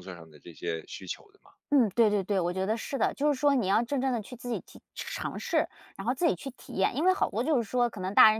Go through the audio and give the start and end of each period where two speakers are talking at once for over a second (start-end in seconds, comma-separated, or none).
none